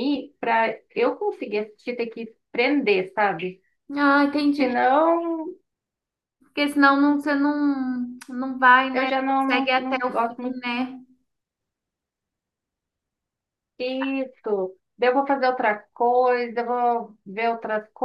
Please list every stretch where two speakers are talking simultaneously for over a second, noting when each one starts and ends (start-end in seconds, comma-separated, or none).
8.9-10.6